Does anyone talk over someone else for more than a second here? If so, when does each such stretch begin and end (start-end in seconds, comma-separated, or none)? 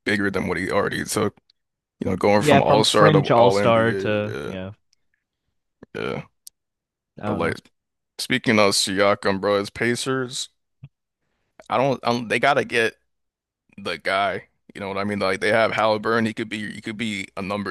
2.4-4.6